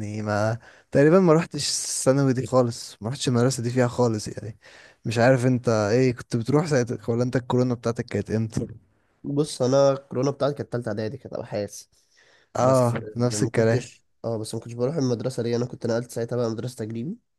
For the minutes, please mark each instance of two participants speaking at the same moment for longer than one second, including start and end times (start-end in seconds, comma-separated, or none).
12.6-13.9